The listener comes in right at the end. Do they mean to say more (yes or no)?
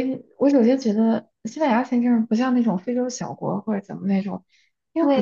yes